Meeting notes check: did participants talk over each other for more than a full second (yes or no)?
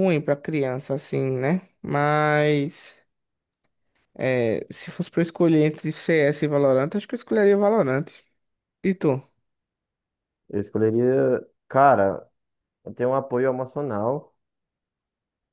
no